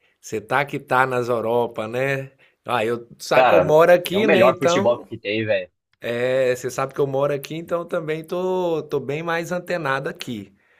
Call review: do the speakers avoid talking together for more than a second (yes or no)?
no